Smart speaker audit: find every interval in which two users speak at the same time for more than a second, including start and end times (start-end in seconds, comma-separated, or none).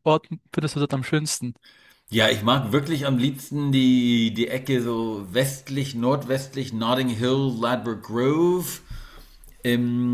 none